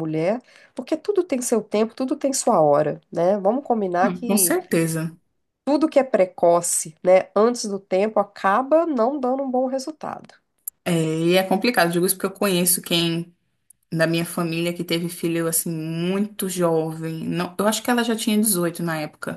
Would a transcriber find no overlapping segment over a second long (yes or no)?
yes